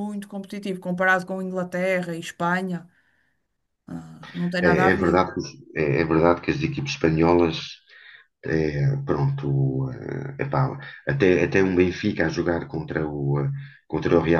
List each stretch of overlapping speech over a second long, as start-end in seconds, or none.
none